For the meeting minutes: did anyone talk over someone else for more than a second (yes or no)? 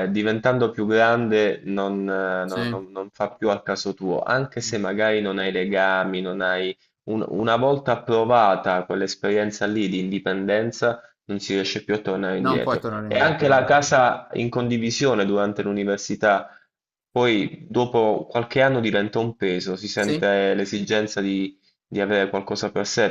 yes